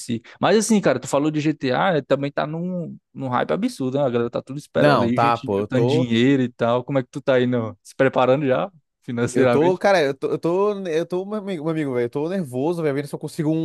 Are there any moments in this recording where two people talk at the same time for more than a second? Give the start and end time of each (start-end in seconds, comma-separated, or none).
4.8-6.1